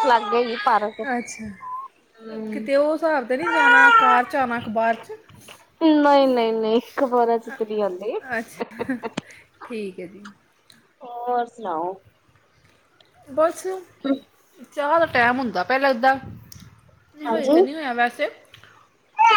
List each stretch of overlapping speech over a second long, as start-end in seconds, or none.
none